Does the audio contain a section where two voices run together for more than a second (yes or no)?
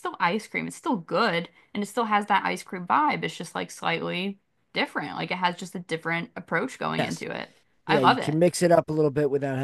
no